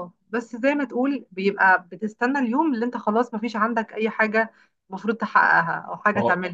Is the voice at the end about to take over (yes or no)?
yes